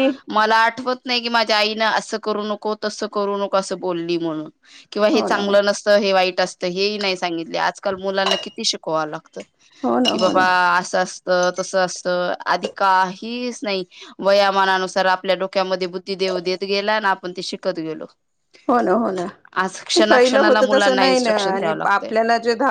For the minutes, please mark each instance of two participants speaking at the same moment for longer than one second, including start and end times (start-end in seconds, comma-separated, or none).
20.1-22.1